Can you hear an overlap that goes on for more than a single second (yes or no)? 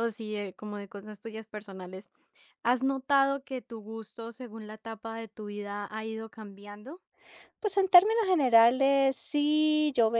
no